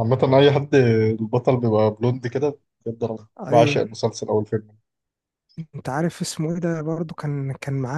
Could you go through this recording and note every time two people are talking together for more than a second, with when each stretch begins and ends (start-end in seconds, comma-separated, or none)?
none